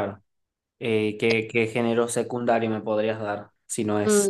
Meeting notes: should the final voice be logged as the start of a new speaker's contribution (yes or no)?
yes